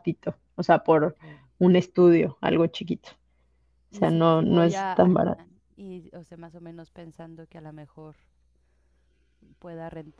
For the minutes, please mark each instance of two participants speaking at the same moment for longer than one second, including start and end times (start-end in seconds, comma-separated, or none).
3.9-5.4